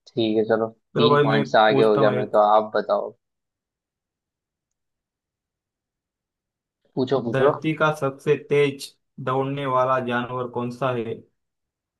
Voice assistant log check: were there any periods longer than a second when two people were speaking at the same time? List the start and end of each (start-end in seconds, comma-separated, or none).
0.9-2.4